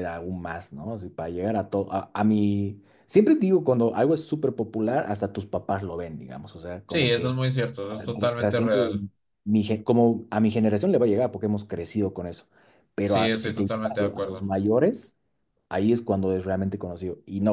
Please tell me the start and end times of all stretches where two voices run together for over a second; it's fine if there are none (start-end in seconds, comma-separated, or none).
13.0-14.5